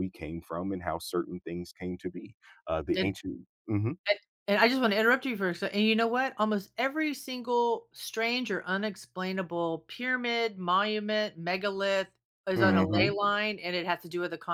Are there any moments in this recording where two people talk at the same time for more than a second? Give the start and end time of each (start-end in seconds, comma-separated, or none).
none